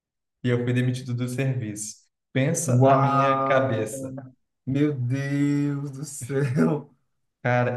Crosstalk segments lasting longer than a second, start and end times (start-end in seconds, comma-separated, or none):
2.7-4.1